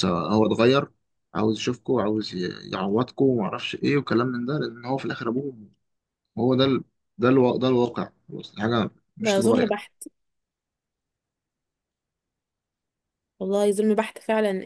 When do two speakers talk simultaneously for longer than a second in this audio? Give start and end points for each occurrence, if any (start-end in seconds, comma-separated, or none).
none